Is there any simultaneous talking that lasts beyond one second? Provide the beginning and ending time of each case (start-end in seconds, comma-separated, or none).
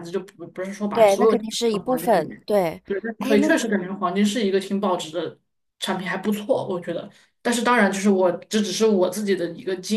0.9-2.4